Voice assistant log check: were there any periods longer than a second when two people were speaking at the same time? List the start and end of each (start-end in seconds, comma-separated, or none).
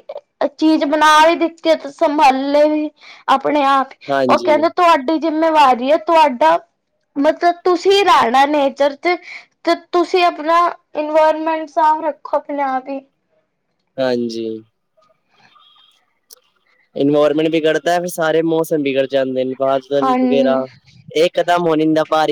none